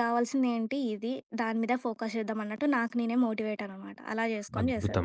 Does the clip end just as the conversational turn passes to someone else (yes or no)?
yes